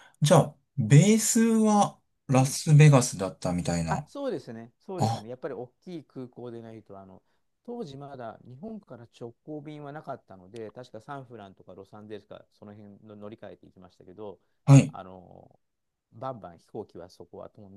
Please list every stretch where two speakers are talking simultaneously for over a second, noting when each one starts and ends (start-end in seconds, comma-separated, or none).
none